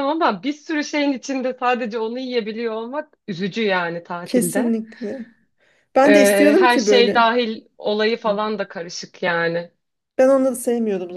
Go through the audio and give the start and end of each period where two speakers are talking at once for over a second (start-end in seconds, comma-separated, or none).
6.0-7.4